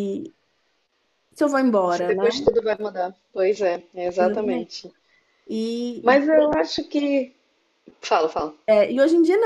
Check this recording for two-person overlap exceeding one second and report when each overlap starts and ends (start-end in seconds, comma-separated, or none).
none